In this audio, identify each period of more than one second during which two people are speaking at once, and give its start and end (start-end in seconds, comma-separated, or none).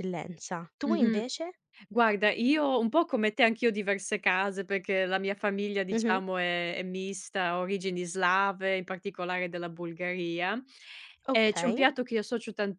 none